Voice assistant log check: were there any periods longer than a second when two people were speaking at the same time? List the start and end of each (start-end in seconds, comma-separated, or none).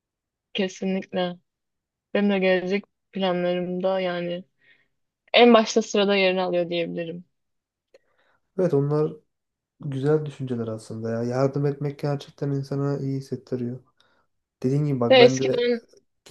none